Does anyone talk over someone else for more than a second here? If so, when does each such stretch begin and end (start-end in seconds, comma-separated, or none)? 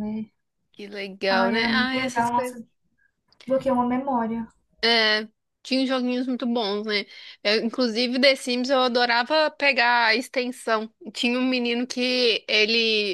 1.3-2.6